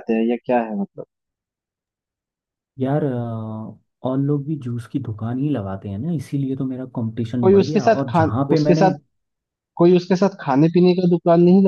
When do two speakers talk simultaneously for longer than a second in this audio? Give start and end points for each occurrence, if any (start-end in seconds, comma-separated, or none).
7.4-8.9